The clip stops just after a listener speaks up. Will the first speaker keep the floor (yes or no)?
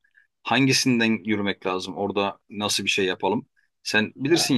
yes